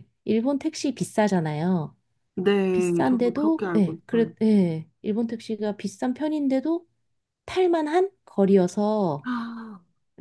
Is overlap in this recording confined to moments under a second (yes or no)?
no